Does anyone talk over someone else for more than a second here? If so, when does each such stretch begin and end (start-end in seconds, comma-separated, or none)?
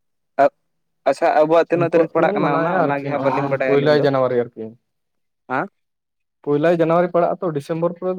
1.8-4.0